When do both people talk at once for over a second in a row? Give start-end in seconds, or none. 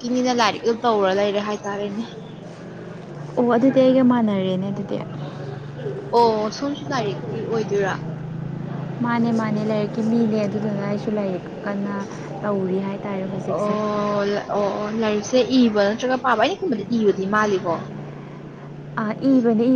none